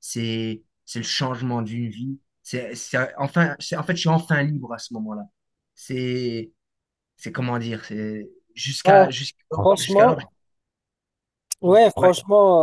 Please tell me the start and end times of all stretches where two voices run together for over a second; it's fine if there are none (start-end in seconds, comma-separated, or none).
none